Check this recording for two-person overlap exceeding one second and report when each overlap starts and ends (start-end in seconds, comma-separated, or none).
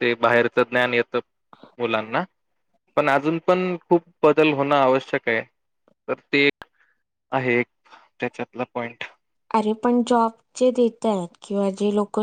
none